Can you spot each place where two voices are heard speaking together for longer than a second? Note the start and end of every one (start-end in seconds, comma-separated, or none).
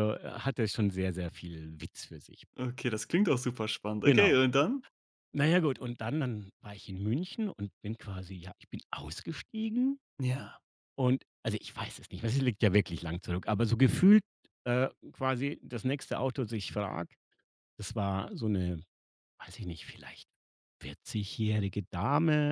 none